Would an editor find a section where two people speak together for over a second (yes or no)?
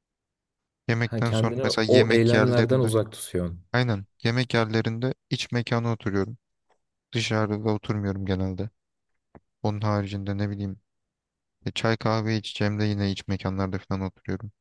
yes